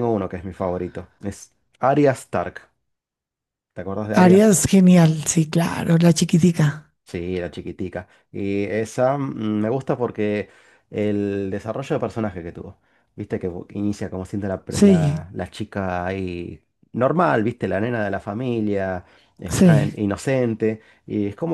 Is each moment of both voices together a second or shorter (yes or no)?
yes